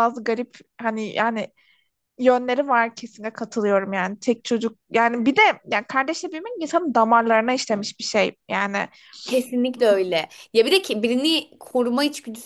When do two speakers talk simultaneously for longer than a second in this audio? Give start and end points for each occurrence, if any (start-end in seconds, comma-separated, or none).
none